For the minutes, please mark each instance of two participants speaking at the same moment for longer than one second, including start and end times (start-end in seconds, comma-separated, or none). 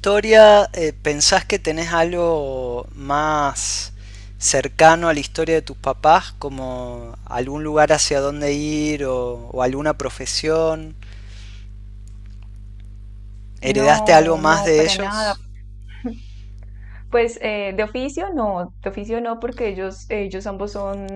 13.6-15.3